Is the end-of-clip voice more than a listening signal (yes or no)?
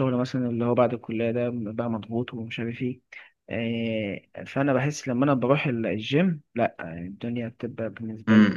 yes